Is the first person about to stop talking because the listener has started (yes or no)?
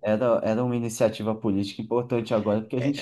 yes